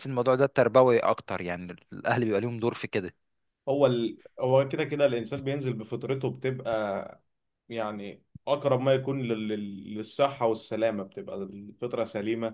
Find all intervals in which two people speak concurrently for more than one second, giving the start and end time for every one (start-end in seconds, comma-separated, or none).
none